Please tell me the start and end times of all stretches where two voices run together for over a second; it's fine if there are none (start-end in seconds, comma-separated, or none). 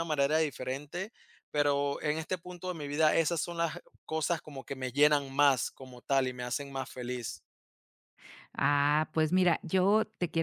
none